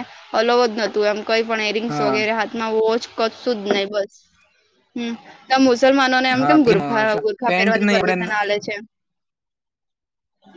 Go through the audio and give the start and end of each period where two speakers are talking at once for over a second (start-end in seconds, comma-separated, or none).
6.4-8.4